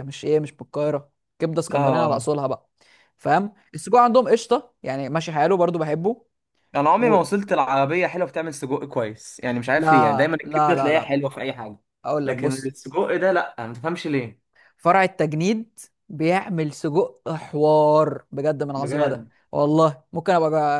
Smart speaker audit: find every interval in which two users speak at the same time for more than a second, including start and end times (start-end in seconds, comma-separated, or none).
9.8-11.2